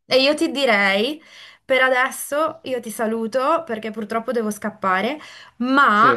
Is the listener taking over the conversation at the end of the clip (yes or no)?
no